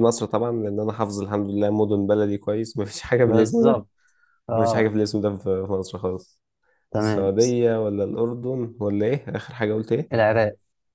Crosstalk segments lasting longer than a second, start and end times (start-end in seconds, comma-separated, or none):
none